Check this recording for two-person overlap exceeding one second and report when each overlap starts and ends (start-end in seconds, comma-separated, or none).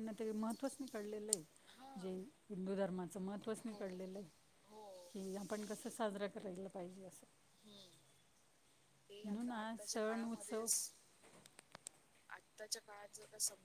9.2-10.7